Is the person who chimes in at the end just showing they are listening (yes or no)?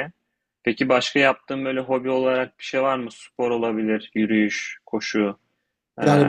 no